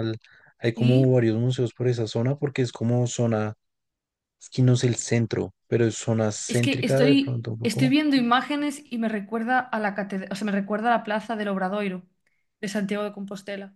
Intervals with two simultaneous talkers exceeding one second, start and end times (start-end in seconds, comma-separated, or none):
6.5-8.0